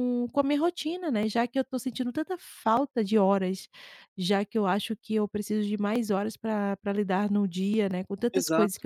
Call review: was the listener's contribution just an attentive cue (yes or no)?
yes